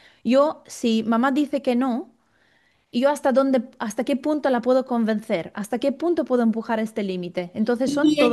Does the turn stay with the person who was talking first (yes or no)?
no